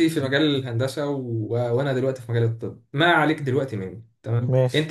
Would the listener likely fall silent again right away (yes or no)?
yes